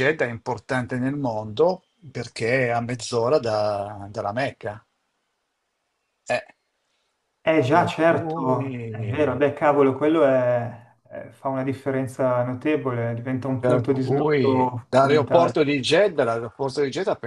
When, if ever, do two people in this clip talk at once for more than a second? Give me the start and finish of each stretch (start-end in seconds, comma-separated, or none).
7.7-9.3, 13.6-15.6